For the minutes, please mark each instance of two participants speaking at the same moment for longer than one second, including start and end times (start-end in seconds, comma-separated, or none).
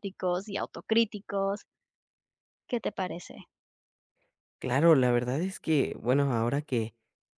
none